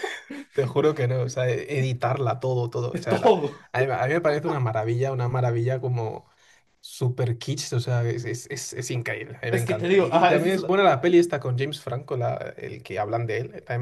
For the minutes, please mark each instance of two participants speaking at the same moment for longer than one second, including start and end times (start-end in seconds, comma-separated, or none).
9.5-10.7